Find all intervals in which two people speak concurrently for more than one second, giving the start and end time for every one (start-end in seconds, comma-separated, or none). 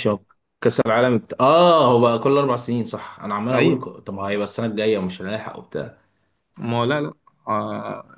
none